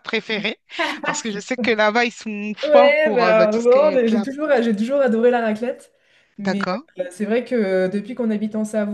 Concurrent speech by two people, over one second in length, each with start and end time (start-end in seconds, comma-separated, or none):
2.6-4.2